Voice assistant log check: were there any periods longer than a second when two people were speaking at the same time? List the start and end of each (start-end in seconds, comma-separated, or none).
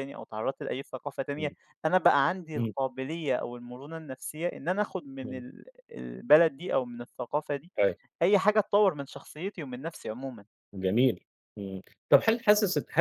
none